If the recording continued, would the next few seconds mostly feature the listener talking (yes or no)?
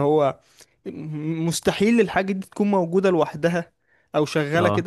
no